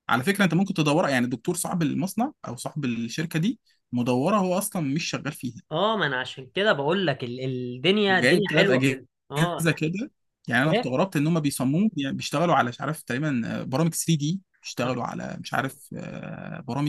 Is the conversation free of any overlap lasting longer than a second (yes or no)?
no